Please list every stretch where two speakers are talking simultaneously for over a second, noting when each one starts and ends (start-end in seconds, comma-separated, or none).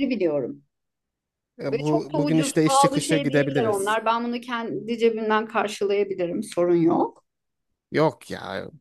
1.7-4.0